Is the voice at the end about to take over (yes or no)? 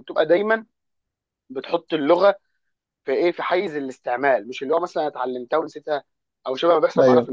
no